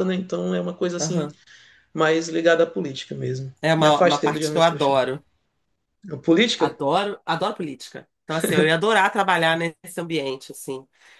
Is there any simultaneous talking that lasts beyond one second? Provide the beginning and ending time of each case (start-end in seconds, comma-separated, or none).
3.6-5.0